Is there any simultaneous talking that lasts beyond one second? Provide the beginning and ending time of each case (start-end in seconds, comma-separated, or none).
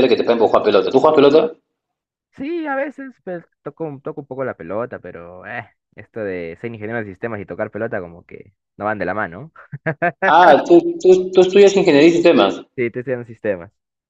none